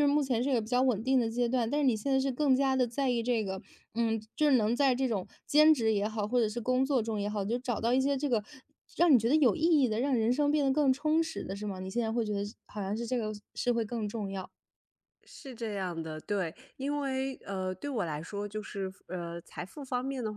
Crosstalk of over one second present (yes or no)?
no